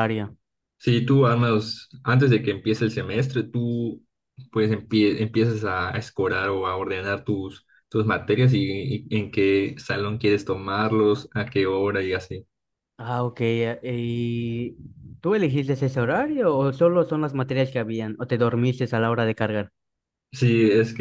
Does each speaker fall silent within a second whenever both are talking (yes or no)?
yes